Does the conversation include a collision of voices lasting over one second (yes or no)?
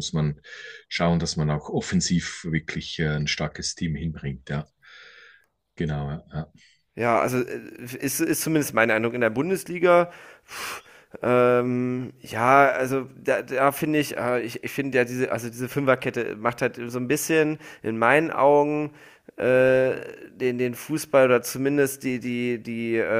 no